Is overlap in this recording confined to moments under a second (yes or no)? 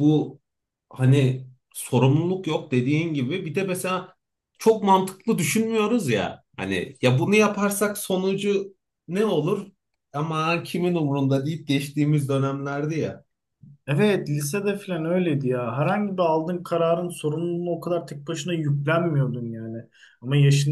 yes